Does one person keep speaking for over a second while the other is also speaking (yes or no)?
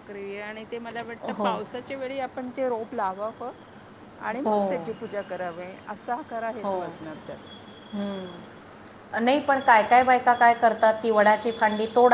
no